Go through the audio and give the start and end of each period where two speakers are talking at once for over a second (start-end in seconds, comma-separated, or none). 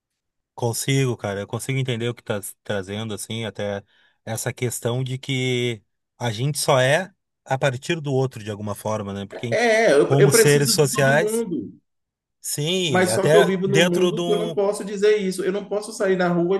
9.5-11.4, 12.9-14.6